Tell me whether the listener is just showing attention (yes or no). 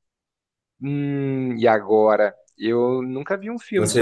no